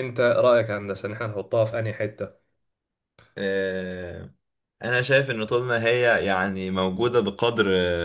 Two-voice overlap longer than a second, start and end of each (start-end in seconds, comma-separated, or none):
none